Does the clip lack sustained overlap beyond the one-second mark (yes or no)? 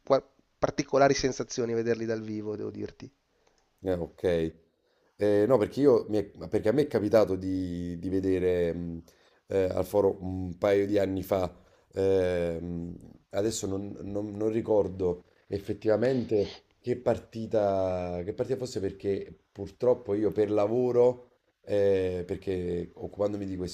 yes